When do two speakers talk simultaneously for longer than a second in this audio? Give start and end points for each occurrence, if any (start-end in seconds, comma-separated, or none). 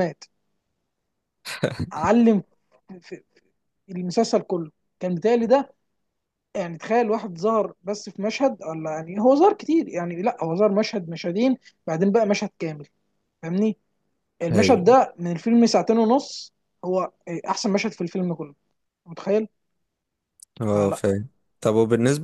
none